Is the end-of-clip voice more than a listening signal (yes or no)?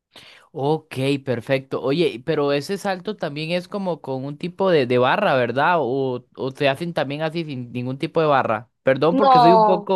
no